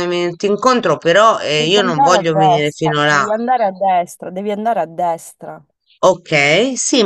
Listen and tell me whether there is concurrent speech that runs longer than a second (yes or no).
yes